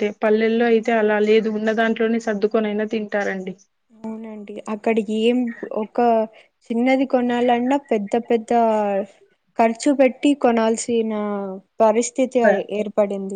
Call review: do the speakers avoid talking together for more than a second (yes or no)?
yes